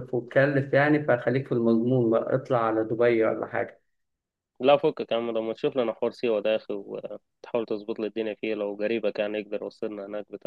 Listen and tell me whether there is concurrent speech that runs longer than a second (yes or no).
no